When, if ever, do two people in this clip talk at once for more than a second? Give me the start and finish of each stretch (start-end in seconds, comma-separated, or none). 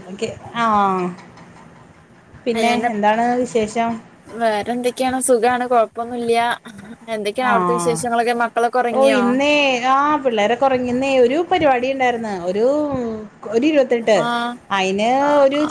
none